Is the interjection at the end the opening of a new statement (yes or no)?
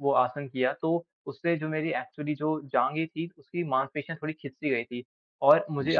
no